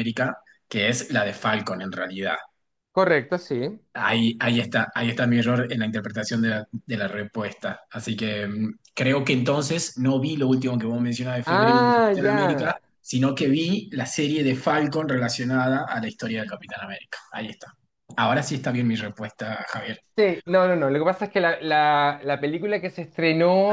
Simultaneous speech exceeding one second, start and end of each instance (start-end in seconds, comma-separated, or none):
11.4-12.7